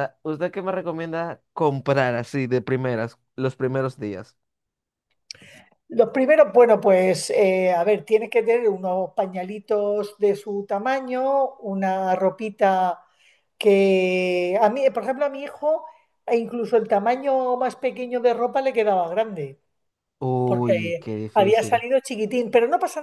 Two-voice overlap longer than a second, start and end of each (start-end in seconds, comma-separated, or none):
20.4-21.8